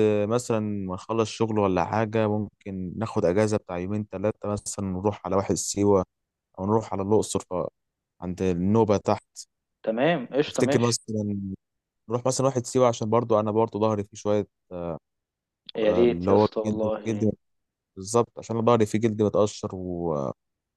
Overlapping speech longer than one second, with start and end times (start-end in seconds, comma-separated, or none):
15.8-17.3